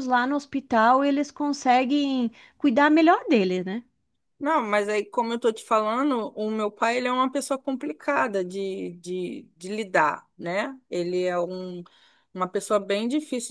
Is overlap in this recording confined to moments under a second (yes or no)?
yes